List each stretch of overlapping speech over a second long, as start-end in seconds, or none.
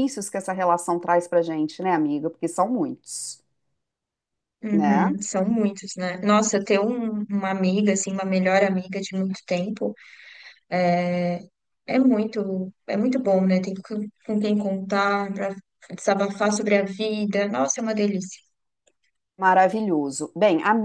none